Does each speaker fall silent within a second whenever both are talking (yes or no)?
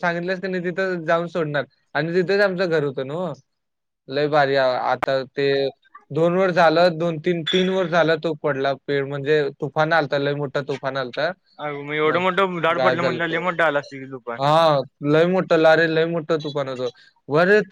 yes